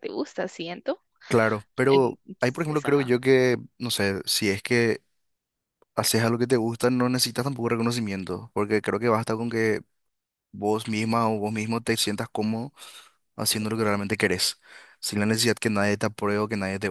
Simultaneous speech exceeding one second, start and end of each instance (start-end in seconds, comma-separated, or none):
1.9-3.1